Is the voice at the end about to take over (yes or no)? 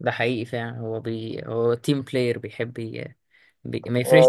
no